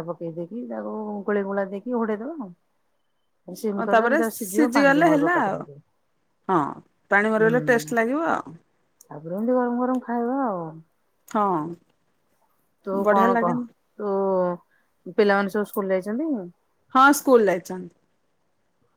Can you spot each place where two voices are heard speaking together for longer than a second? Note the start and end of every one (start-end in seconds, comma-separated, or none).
3.8-5.6